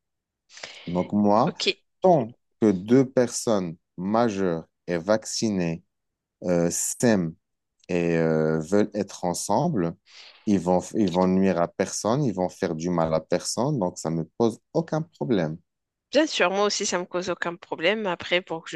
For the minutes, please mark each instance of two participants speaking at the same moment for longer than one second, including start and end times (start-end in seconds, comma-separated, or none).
none